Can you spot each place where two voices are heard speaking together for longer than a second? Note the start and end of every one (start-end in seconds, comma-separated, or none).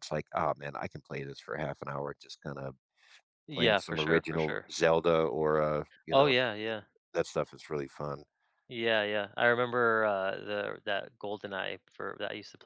3.5-4.7